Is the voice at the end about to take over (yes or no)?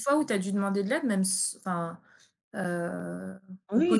yes